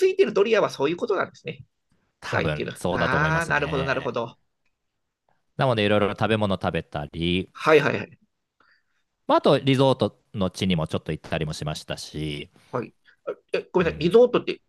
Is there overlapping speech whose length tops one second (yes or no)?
yes